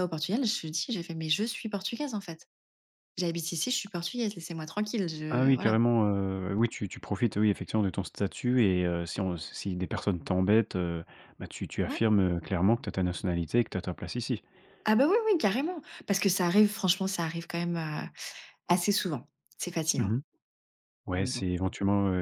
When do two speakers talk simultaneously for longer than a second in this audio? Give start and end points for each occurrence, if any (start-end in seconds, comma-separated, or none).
none